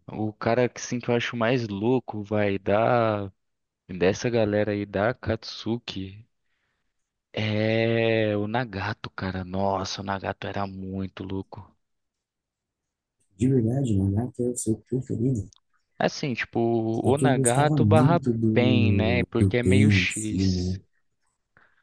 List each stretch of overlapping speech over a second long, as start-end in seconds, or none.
17.0-20.8